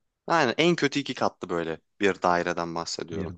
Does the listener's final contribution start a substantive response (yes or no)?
no